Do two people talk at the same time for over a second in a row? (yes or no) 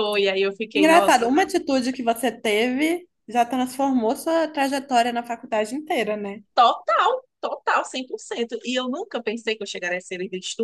no